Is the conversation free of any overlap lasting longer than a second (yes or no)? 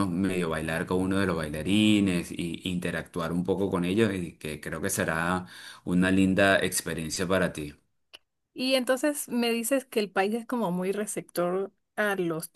yes